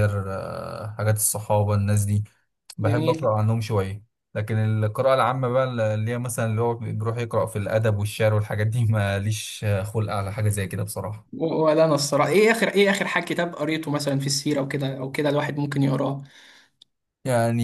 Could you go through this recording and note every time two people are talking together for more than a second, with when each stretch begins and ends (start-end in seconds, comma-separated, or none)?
none